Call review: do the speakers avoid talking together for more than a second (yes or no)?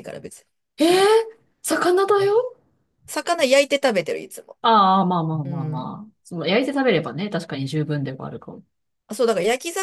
yes